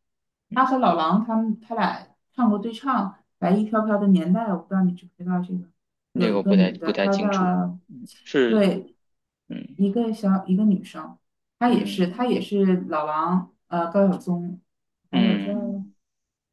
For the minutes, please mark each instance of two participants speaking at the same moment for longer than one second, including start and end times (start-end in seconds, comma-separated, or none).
6.2-7.5